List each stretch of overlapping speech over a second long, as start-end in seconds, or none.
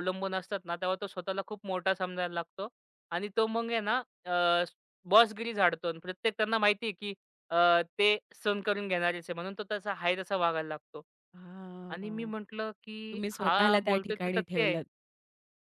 13.1-14.8